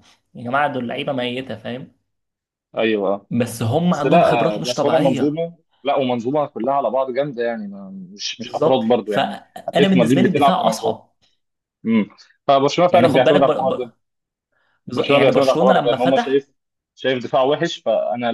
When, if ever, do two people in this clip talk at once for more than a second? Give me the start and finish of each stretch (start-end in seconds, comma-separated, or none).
3.9-5.4, 8.4-11.0, 14.9-16.5